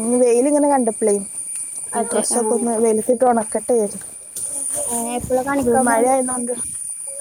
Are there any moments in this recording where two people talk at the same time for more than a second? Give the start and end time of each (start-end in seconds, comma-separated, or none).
none